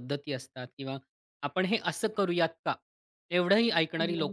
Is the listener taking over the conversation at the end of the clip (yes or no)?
no